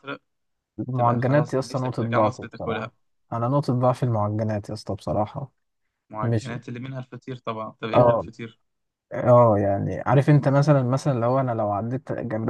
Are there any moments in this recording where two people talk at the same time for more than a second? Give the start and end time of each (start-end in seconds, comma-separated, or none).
0.9-2.9